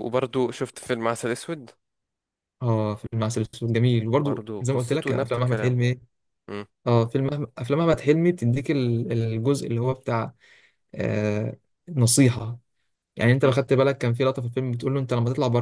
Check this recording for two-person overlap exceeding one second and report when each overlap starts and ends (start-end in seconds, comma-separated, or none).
4.2-5.8